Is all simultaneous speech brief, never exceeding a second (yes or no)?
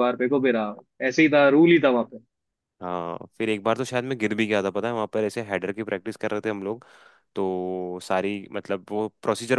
yes